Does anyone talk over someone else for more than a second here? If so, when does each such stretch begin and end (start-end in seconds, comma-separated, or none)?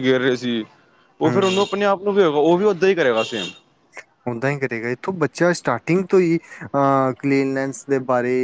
none